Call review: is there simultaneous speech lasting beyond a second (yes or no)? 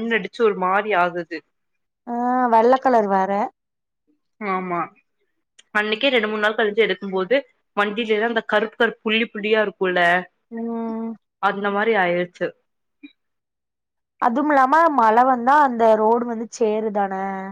no